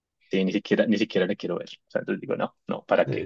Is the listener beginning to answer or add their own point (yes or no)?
yes